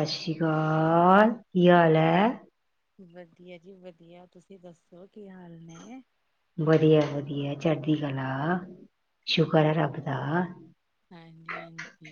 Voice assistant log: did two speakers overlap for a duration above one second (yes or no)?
no